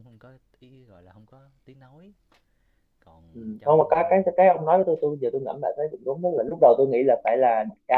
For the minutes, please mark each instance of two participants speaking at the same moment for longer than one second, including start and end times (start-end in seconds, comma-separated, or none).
none